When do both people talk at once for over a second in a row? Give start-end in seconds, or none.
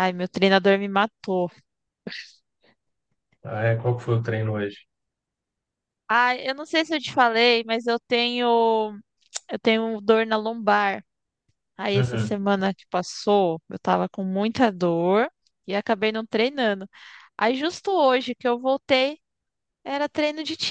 none